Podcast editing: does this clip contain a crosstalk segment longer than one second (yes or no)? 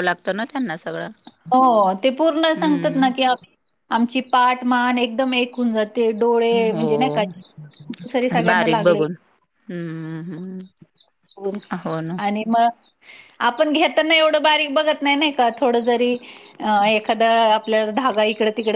no